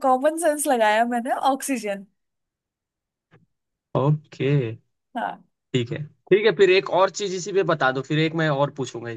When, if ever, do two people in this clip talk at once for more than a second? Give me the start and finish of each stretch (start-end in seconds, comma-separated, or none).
none